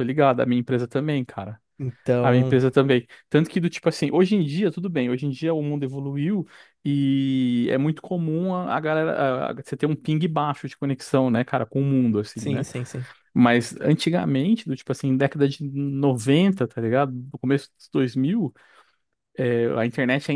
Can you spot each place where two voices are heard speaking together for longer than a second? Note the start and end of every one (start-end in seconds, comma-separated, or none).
none